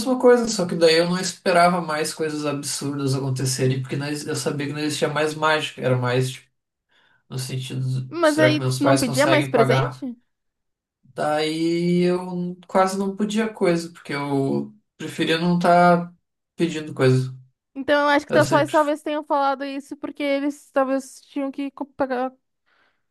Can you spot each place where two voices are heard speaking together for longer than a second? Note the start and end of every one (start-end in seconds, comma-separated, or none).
8.1-10.0